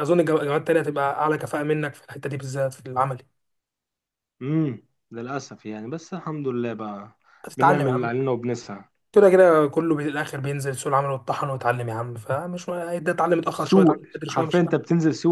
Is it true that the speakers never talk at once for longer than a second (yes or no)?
no